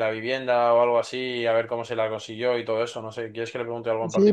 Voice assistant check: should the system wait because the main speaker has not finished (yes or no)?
no